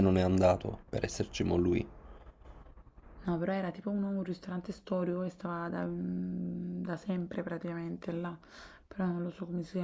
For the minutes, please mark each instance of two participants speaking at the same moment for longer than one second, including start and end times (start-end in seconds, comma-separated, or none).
none